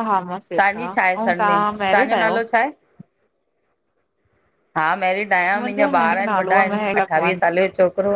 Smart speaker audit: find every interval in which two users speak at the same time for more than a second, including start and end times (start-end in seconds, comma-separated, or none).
5.5-7.4